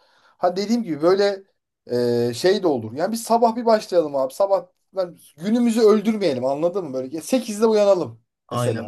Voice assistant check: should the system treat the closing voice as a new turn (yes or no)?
yes